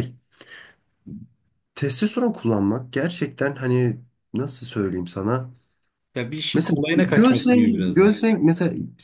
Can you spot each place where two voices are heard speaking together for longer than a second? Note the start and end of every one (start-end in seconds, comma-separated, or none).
6.5-8.1